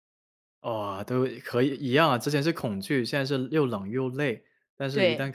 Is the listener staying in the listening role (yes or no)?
yes